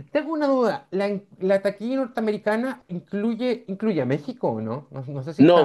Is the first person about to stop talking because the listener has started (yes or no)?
yes